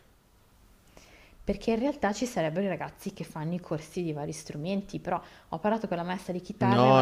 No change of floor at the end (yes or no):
no